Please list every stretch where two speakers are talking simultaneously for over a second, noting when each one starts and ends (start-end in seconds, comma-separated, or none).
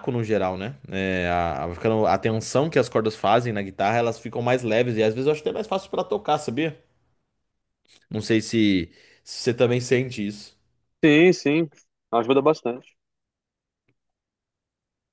none